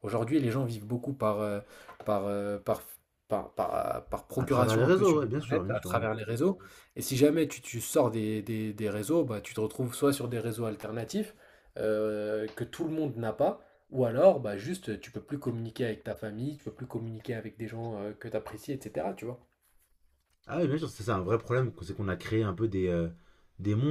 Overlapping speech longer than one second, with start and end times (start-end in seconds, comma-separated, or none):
4.4-5.9